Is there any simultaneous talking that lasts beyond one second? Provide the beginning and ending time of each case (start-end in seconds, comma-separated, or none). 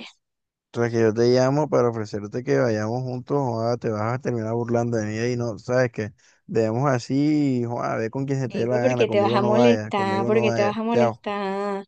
8.5-11.2